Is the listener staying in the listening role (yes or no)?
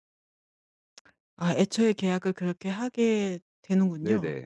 no